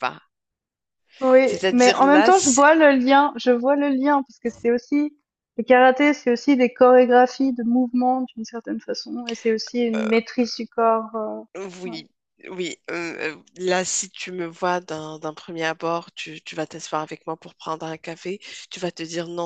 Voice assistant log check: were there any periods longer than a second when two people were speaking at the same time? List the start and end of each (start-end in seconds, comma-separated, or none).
1.4-2.6